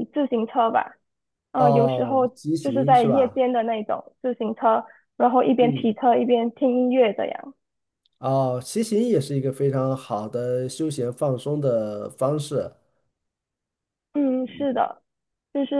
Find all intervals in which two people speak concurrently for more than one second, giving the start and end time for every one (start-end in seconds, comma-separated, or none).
1.5-3.4